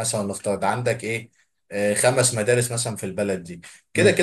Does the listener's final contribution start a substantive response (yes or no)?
no